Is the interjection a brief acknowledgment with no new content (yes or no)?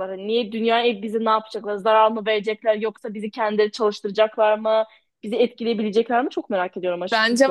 no